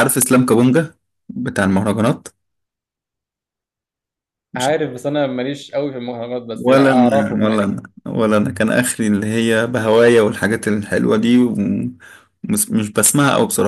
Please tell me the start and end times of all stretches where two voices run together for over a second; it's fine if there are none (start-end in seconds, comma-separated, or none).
6.6-7.8